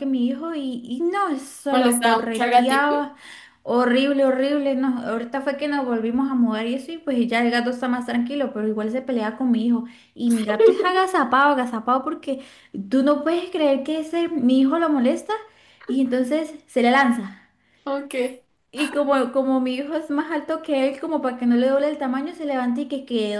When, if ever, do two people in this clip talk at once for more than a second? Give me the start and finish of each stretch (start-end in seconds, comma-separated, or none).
1.7-3.0